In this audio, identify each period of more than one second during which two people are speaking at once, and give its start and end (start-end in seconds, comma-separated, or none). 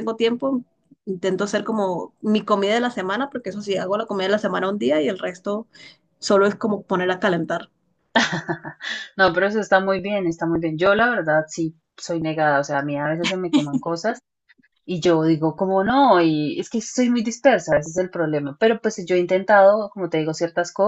none